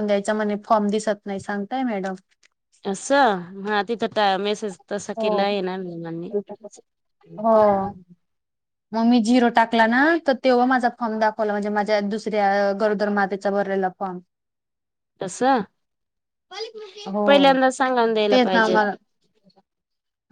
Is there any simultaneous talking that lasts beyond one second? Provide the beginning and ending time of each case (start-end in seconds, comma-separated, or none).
none